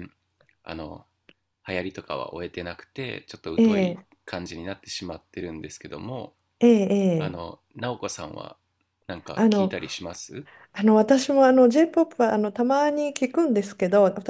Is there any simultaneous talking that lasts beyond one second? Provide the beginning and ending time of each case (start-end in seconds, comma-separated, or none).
none